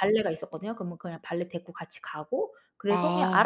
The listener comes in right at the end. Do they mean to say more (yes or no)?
no